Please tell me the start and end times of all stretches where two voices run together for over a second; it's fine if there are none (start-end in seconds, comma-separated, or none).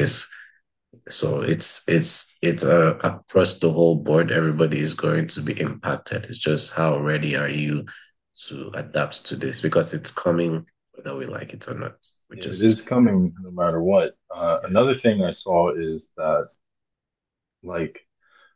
none